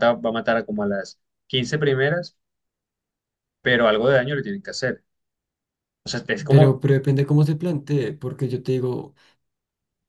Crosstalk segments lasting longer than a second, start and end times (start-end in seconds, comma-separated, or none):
none